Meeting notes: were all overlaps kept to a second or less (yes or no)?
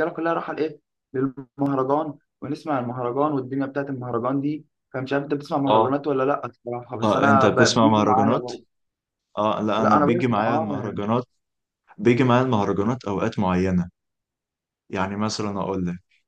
no